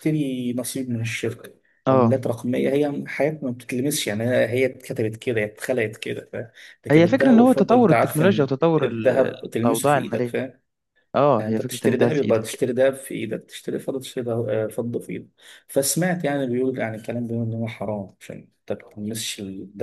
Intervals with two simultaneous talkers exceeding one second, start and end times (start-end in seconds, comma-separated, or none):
6.9-10.3, 11.4-12.6